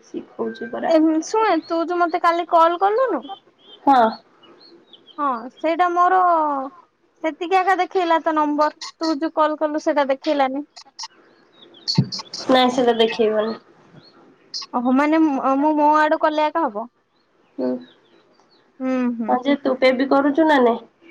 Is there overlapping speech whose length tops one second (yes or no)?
no